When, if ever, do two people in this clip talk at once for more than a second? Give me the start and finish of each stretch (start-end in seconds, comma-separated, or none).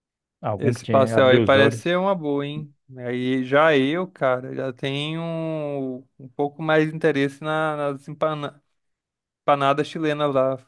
0.6-1.9